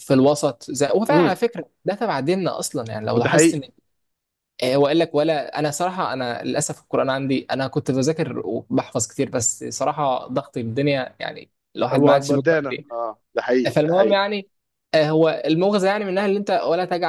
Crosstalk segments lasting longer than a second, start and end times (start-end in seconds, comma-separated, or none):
none